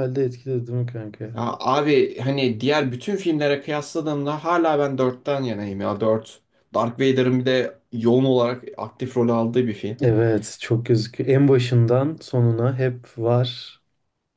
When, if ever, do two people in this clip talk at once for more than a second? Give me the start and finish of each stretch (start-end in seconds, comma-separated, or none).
none